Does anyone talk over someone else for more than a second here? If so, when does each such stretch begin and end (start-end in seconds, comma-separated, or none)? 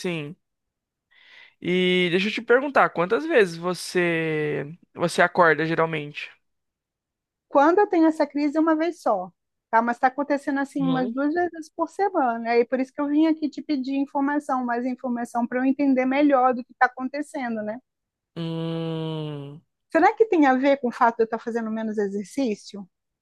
none